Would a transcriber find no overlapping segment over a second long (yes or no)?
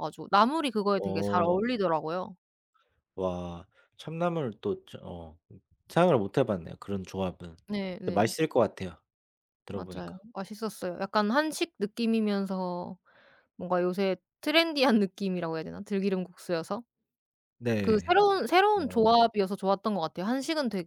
yes